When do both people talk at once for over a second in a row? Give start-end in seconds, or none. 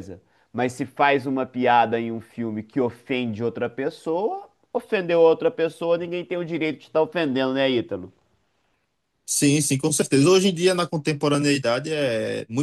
none